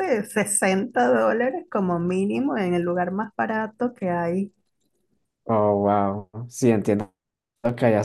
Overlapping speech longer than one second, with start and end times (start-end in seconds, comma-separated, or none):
none